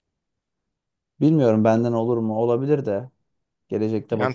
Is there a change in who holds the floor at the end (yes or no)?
yes